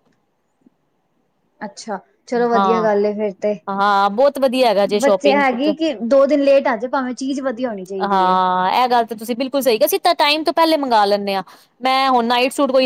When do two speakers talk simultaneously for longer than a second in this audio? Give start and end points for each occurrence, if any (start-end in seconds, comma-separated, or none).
none